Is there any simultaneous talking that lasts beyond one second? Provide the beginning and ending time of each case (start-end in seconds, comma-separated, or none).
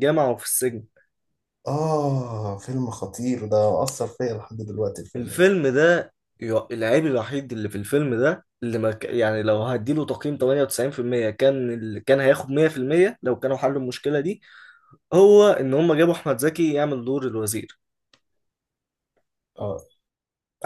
none